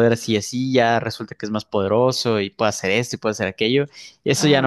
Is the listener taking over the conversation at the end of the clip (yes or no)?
yes